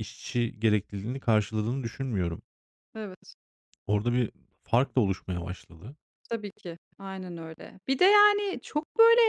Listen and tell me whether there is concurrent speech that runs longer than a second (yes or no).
no